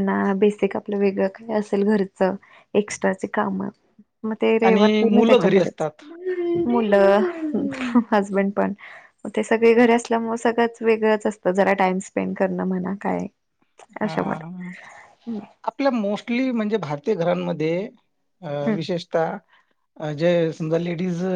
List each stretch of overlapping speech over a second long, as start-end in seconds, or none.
4.7-5.9